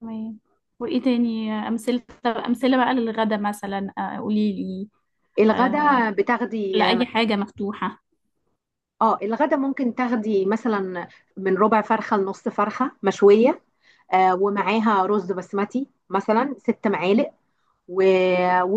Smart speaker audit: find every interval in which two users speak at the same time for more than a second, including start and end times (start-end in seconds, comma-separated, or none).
none